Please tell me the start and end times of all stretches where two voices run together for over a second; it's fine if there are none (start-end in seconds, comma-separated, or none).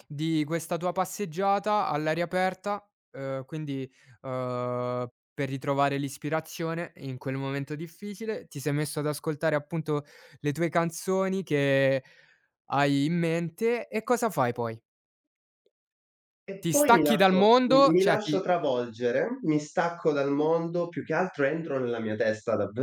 16.6-18.4